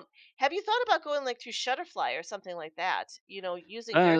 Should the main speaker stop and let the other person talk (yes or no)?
yes